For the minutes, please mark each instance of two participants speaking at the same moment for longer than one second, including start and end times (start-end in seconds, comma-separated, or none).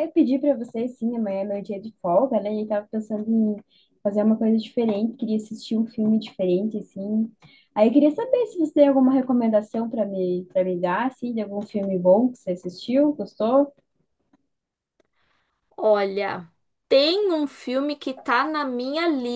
none